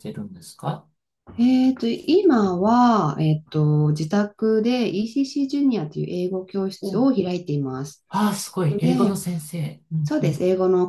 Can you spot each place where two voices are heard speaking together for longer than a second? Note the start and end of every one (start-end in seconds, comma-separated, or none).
none